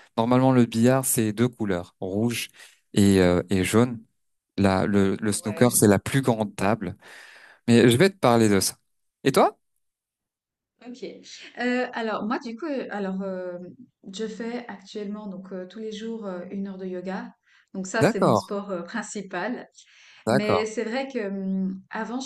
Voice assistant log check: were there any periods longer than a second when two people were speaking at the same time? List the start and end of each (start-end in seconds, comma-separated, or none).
none